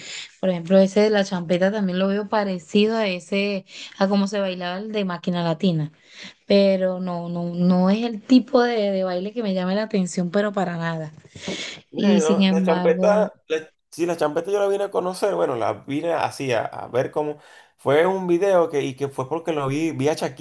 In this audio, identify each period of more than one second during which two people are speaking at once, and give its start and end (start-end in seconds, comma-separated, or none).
11.9-13.3